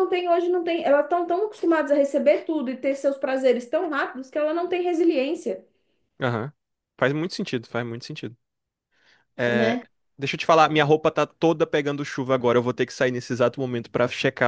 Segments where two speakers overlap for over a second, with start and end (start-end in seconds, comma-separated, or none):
none